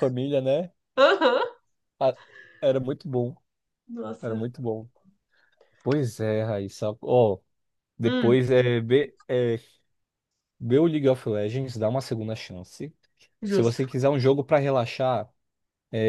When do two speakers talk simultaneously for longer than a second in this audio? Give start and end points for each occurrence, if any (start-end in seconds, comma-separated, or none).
none